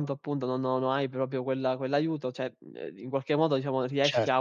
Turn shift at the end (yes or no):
yes